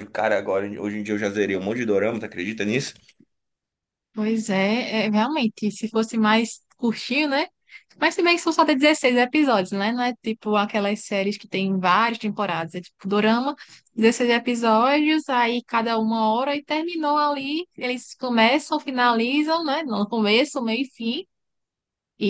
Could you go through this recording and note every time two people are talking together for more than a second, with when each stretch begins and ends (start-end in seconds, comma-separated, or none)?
none